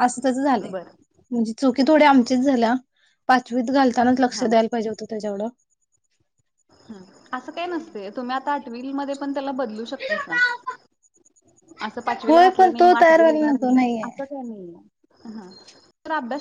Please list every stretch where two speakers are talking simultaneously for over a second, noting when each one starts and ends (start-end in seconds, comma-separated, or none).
12.3-14.1